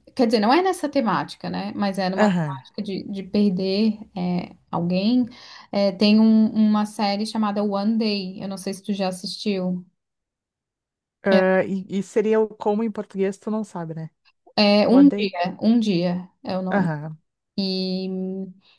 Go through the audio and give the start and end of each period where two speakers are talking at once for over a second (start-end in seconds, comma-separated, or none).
none